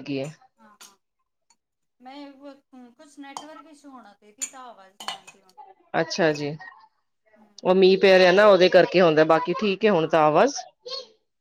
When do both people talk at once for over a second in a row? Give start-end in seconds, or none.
none